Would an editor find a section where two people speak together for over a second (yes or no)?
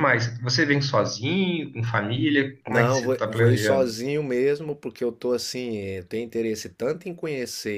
yes